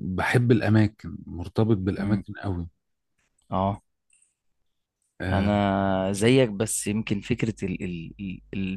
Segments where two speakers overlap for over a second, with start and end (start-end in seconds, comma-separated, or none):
none